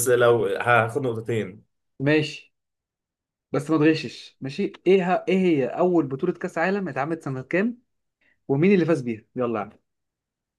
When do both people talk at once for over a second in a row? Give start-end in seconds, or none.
none